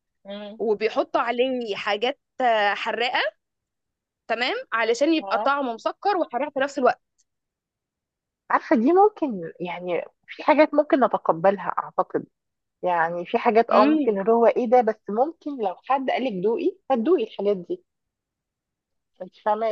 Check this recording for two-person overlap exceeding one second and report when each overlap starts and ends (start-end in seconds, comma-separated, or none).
none